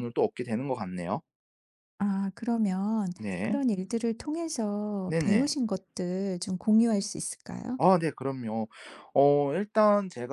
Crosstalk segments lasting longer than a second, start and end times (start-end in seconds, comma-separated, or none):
none